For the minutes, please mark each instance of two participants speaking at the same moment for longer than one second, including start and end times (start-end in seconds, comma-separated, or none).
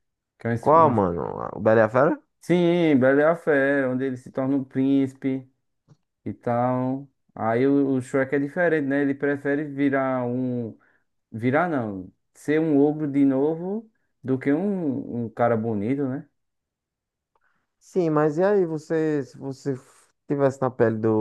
none